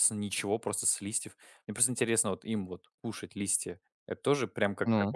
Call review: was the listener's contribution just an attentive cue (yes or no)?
yes